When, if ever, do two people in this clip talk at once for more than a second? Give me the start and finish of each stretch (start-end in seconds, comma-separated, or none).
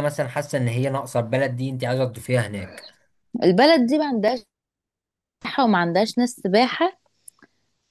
none